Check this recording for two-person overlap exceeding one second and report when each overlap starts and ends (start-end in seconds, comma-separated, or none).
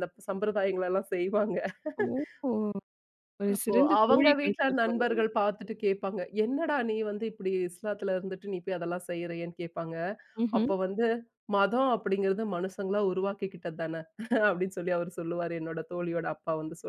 3.5-5.3